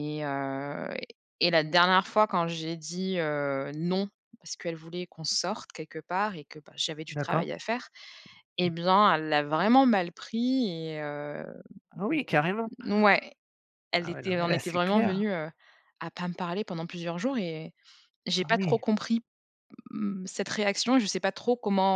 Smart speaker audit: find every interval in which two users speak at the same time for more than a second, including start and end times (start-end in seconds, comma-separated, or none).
14.0-15.2